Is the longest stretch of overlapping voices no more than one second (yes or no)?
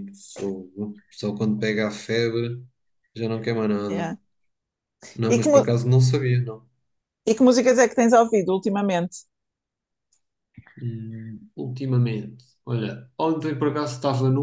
yes